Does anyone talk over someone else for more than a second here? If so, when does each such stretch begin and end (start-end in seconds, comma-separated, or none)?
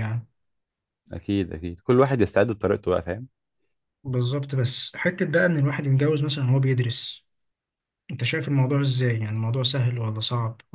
none